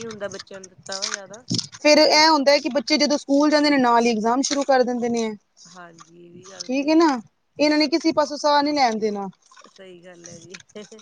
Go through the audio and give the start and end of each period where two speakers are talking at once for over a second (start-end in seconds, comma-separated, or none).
none